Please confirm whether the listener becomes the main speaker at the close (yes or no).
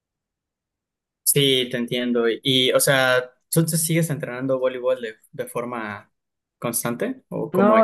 yes